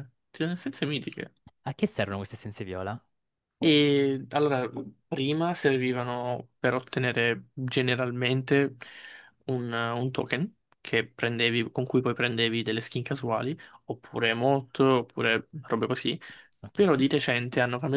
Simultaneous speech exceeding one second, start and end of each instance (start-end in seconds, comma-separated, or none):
none